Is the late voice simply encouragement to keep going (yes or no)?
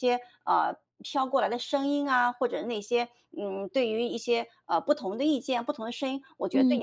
yes